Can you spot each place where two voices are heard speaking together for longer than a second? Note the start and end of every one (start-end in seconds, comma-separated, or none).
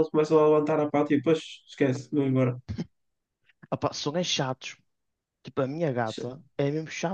none